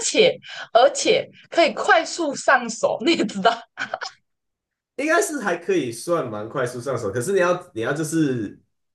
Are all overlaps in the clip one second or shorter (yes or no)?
yes